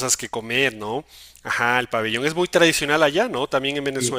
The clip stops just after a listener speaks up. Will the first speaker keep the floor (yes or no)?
no